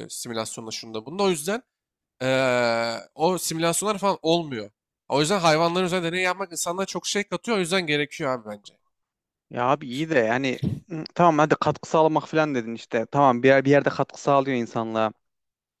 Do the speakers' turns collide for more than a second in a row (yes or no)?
no